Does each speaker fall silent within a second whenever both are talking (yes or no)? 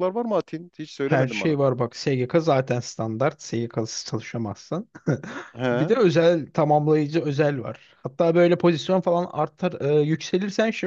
yes